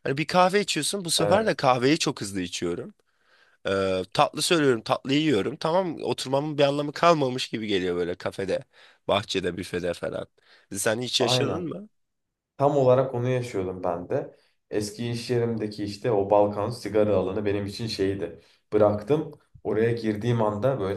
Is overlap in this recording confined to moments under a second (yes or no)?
yes